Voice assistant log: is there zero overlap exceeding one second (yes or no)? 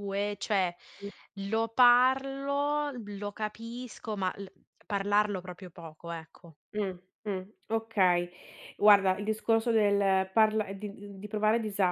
yes